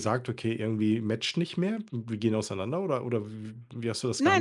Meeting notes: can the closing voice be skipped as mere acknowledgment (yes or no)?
no